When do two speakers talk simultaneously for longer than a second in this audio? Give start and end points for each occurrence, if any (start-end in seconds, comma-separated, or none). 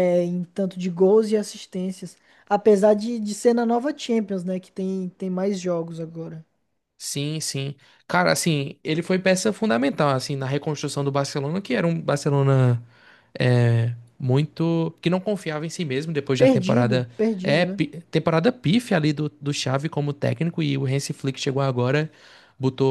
16.4-17.8